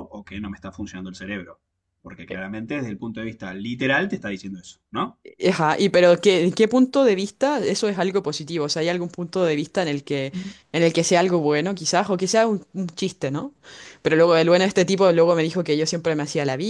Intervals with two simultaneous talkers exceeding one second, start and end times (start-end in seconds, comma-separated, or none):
none